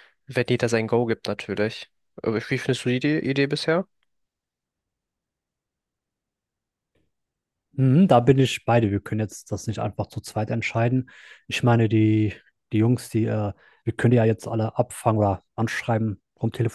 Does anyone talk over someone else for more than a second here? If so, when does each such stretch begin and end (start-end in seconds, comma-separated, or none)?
none